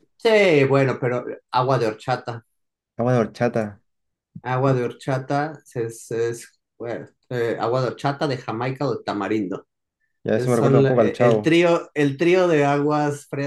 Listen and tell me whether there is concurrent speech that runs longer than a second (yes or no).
yes